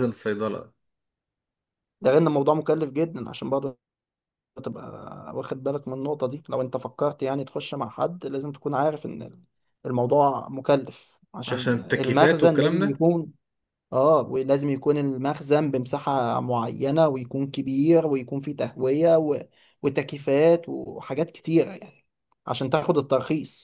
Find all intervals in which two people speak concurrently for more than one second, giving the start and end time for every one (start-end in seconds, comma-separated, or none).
11.5-13.0